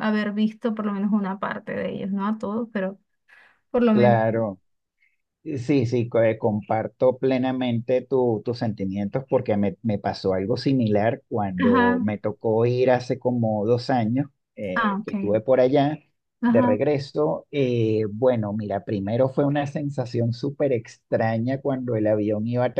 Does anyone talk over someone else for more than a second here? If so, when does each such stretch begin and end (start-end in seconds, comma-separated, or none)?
none